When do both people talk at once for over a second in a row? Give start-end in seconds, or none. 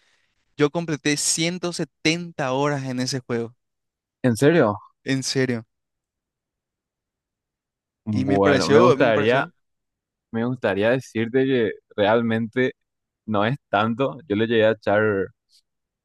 8.1-9.4